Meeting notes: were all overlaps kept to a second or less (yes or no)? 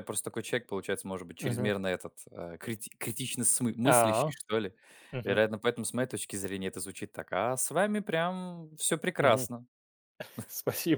yes